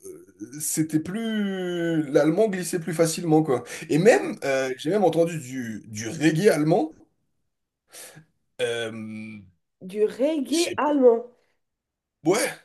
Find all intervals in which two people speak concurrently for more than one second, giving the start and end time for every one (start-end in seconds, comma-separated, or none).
none